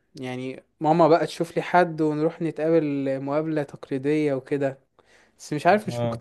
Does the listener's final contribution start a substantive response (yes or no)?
no